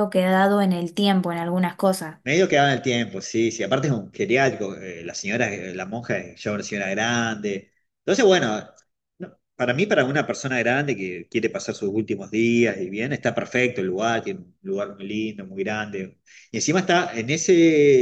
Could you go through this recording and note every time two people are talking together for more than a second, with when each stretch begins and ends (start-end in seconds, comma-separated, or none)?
none